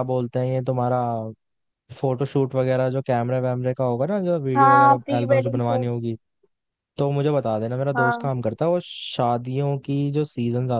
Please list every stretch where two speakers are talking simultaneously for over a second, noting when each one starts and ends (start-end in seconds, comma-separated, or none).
4.5-5.9